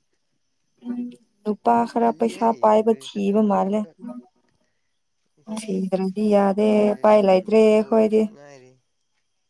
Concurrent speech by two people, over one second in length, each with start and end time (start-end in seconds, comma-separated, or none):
1.9-3.8, 6.7-8.2